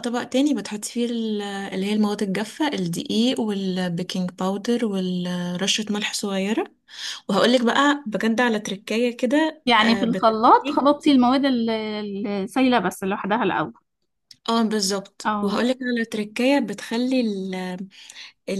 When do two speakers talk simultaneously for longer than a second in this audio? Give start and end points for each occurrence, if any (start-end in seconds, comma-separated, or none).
9.7-10.9